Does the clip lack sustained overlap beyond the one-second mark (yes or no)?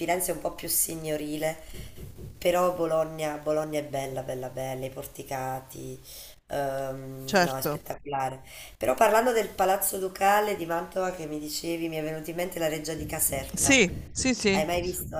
yes